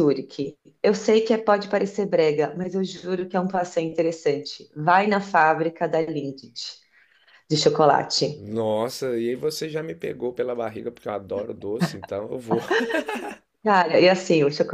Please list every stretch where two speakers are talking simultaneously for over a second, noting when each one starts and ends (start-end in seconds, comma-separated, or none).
none